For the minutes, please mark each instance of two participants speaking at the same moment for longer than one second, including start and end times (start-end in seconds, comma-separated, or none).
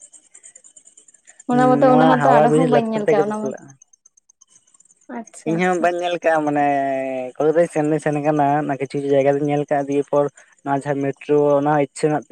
1.5-3.5